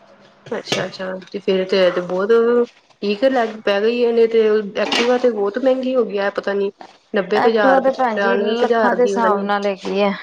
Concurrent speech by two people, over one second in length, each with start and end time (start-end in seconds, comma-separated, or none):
7.4-9.5